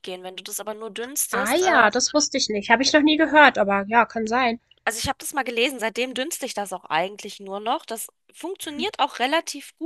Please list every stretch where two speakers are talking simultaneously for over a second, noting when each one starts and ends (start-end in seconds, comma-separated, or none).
none